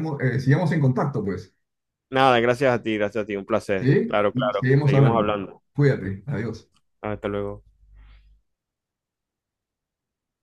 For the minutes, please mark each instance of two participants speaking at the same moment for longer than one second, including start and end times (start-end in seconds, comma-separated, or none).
3.7-5.3